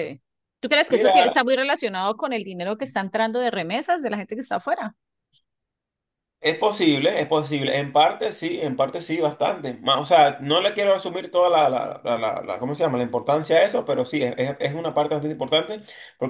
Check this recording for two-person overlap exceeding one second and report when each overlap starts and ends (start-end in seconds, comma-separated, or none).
none